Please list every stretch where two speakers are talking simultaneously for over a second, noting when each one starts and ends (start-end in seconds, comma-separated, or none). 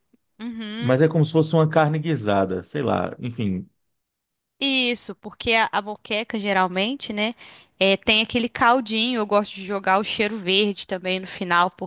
none